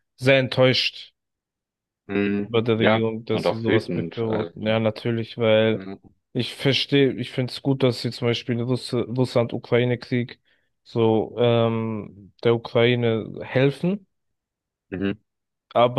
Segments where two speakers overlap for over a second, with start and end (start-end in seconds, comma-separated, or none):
2.4-4.5